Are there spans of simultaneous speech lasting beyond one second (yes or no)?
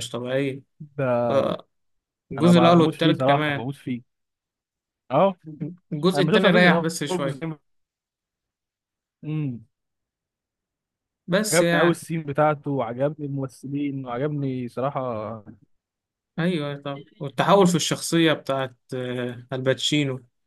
yes